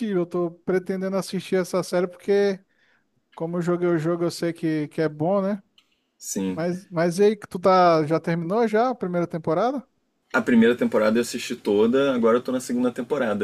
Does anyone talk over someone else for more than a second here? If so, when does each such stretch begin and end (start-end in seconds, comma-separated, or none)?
none